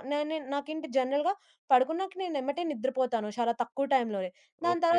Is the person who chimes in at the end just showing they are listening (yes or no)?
no